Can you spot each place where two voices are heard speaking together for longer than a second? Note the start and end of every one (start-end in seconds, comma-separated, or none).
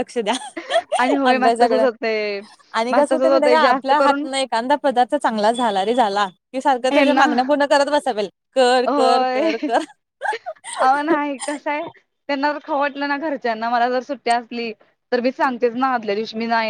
2.9-4.2